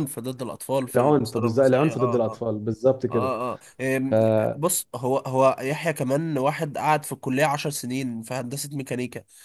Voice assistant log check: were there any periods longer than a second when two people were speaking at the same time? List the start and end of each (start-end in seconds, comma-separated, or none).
0.9-2.4